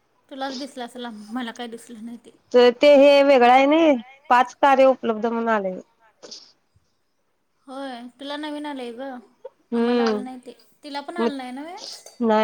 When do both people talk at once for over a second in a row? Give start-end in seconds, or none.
none